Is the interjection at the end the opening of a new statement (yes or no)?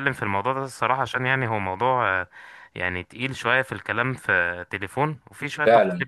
no